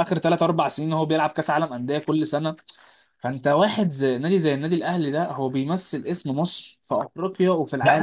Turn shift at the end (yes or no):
yes